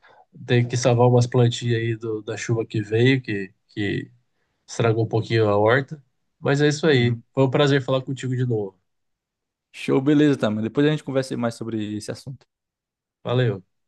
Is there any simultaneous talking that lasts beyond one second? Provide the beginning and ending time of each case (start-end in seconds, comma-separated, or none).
none